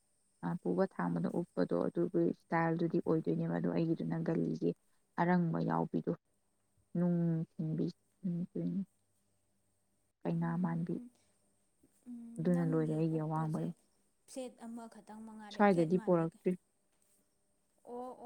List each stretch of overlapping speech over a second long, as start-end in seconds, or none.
12.4-13.7